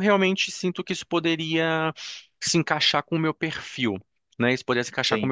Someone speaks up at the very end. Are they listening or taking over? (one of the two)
listening